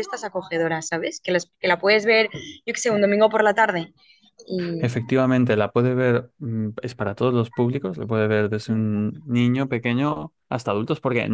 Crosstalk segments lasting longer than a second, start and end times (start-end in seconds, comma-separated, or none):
none